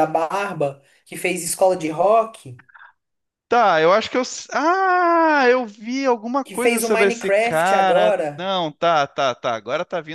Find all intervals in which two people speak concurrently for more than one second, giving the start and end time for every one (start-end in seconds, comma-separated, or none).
6.5-8.5